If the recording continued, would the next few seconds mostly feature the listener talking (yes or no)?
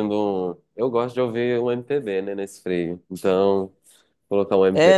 yes